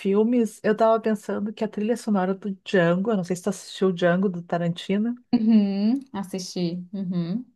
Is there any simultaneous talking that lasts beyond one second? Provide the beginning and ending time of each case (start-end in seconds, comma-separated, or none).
none